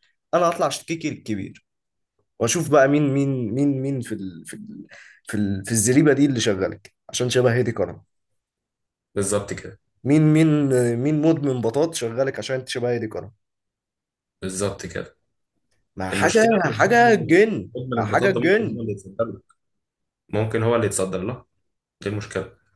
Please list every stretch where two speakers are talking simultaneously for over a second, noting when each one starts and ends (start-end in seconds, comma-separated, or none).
16.1-18.8